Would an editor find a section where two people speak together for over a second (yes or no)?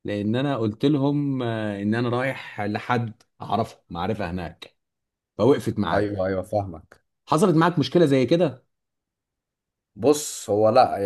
no